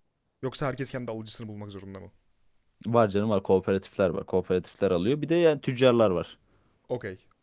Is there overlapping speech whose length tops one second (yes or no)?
no